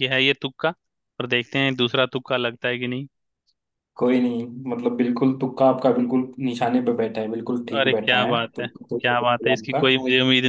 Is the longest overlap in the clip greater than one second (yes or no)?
yes